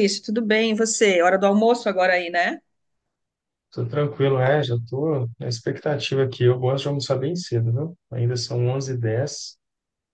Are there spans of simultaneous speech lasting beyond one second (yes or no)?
no